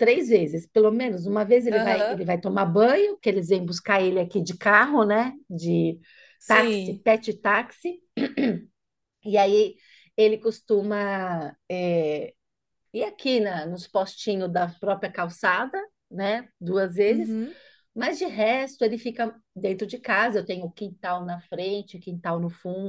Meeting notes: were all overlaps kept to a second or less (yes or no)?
yes